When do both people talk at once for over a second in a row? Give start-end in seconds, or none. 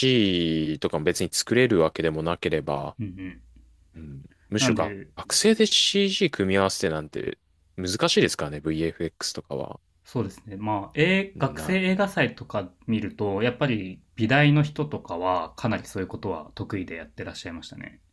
none